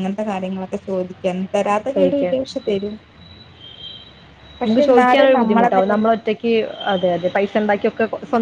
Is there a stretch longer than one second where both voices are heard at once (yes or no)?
yes